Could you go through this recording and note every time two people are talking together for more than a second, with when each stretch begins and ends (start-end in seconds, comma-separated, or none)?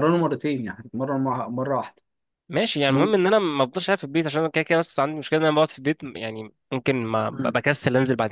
none